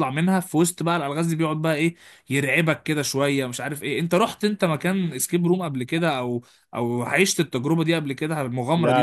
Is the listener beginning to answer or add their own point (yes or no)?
yes